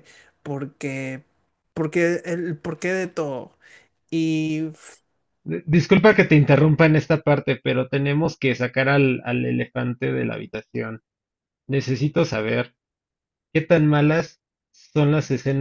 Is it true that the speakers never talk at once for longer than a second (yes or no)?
yes